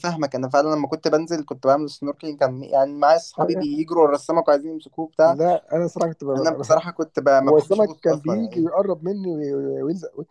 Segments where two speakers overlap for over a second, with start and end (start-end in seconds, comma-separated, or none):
7.5-8.7